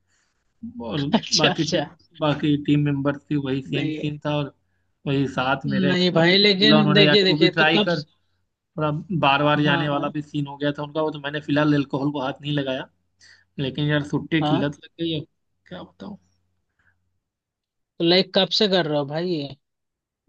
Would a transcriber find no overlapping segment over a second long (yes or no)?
no